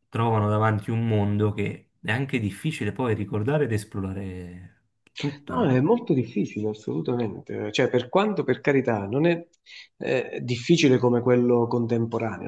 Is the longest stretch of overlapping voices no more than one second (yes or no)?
yes